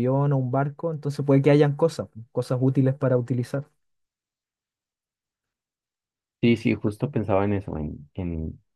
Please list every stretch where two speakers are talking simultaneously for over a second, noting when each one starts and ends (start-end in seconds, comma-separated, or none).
none